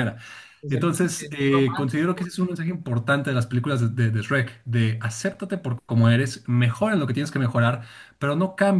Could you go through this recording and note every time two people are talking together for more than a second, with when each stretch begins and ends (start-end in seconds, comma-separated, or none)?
0.7-2.3